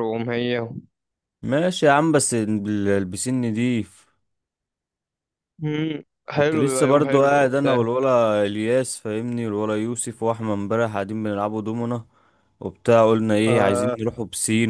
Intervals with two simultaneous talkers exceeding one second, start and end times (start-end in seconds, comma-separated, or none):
6.3-7.8